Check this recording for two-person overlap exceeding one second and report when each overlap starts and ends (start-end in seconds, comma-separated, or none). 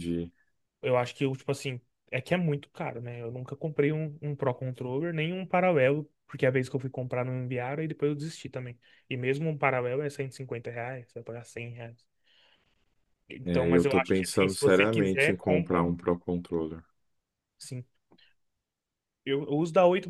13.4-16.0